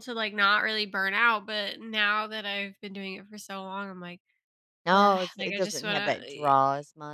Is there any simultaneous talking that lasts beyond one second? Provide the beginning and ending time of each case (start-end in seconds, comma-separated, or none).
4.9-6.5